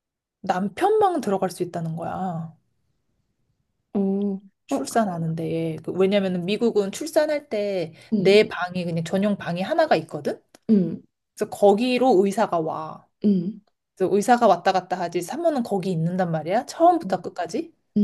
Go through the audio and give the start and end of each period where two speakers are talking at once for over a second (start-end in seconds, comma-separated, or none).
none